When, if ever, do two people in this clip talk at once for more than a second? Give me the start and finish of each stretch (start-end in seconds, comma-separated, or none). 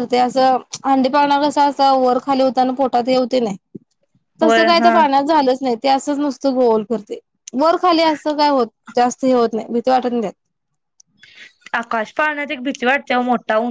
none